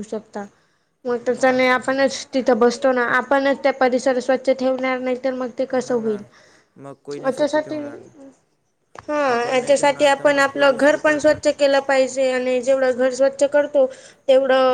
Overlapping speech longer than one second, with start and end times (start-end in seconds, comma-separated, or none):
9.3-11.4